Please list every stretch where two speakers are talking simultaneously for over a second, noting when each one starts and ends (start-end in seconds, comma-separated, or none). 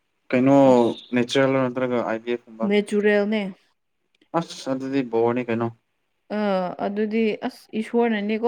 none